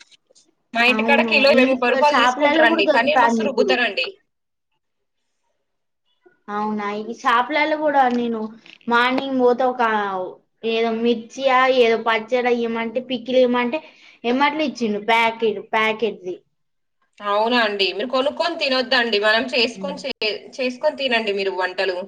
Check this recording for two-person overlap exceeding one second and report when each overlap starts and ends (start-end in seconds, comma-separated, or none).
0.9-3.7